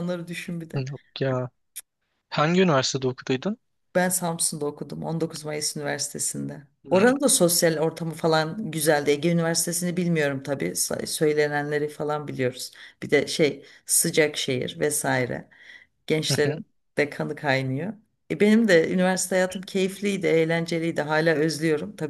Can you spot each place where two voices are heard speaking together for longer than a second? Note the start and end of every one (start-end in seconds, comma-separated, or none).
none